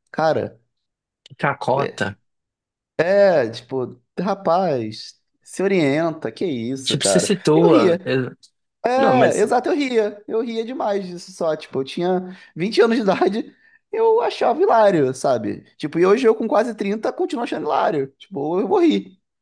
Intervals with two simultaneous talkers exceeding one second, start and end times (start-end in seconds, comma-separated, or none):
6.8-8.1